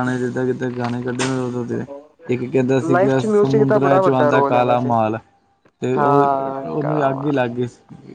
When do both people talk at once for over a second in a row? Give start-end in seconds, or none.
2.9-5.0, 6.0-7.4